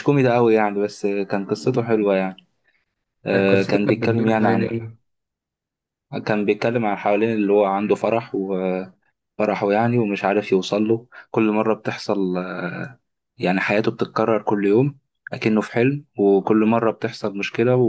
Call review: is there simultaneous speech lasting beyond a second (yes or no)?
yes